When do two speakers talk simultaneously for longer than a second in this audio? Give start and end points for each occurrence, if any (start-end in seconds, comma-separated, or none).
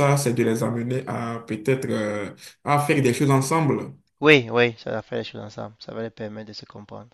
none